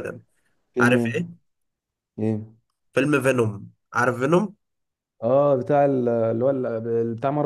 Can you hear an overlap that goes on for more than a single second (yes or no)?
no